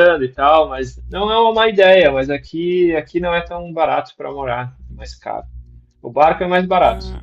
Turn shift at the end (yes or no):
no